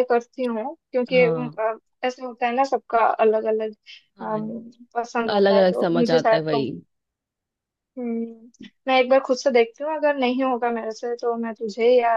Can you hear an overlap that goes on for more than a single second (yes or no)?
yes